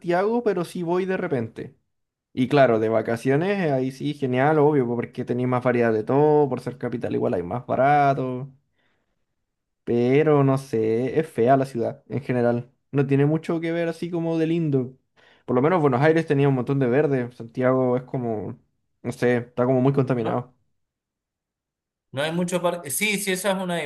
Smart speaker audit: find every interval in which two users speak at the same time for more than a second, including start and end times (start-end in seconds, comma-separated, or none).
none